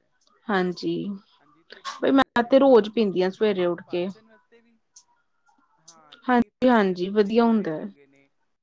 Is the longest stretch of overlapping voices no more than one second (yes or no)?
no